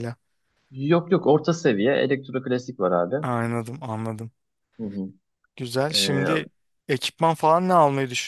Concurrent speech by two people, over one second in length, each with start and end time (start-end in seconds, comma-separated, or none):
none